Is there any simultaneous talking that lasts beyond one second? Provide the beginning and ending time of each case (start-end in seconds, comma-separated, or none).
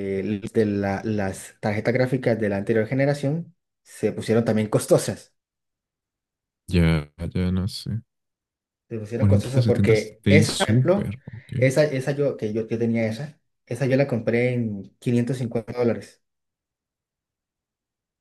9.1-11.1